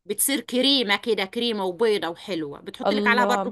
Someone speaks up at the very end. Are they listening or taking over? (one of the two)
taking over